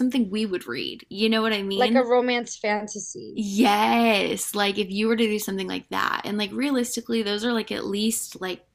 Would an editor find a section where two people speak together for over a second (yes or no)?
no